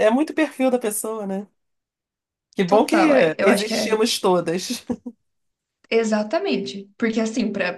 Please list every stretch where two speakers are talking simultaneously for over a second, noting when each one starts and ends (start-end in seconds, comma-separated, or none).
2.7-4.0